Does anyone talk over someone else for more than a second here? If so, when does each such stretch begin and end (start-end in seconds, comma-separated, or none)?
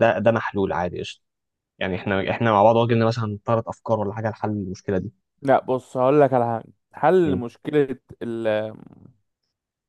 none